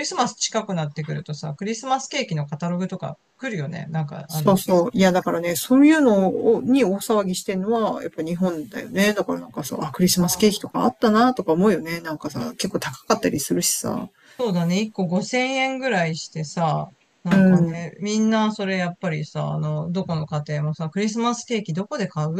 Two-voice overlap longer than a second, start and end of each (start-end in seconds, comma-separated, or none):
none